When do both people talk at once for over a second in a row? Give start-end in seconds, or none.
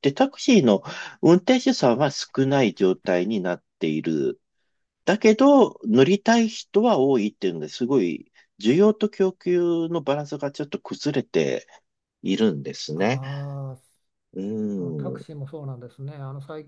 none